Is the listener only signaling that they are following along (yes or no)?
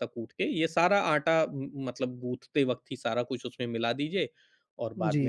no